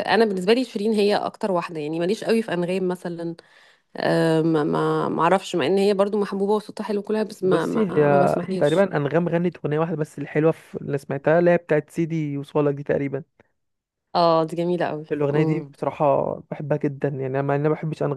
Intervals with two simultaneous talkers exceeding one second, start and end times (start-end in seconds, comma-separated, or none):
7.4-8.9